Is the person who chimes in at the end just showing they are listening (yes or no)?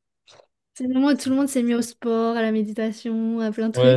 no